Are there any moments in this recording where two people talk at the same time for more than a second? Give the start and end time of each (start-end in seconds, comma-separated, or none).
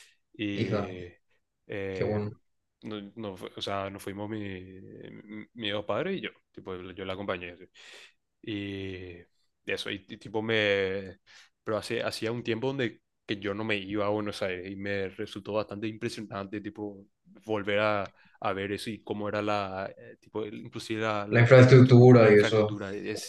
21.3-22.8